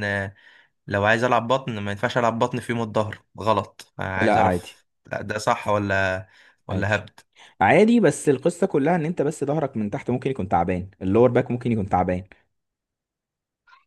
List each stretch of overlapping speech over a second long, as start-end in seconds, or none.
none